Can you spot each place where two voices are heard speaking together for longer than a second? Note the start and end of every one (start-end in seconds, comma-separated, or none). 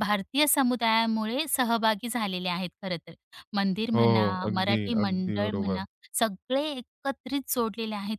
3.9-5.8